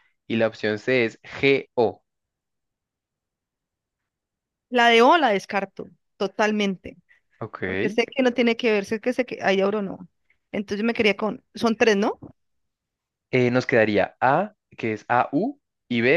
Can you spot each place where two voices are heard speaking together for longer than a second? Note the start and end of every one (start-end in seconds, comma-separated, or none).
none